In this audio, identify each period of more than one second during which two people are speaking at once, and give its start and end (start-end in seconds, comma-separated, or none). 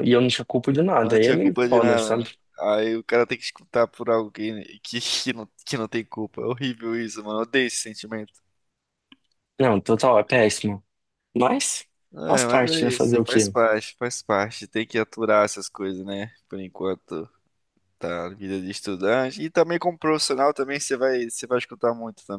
1.0-2.4, 12.3-13.6